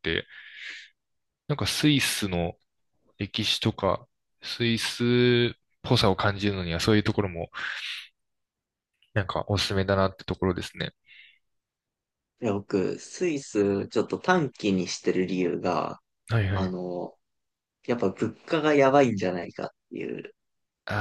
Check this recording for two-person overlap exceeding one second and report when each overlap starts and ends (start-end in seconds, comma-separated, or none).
none